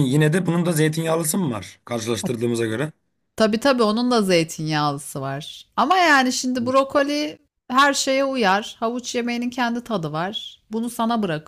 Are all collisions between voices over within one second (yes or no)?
yes